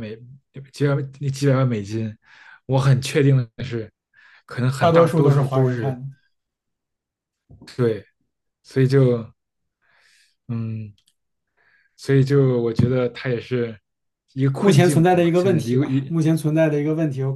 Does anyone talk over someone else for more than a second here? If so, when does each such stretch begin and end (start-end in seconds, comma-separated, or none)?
4.8-6.0, 14.6-16.1